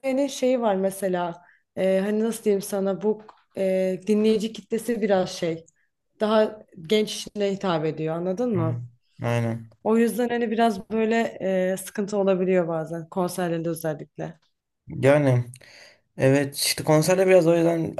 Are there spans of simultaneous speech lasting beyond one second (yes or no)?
no